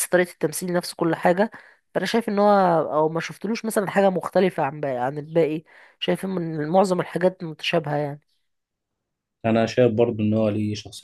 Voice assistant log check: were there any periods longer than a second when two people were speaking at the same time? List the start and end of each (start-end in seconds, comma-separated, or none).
none